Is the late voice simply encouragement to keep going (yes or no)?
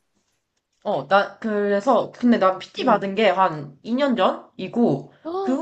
yes